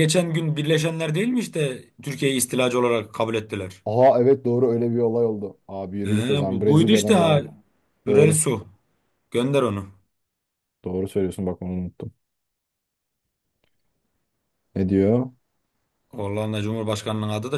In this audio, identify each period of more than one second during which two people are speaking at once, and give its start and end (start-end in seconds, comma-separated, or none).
6.0-7.4